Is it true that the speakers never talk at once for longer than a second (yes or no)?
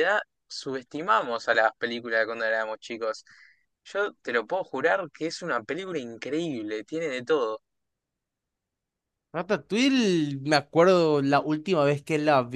yes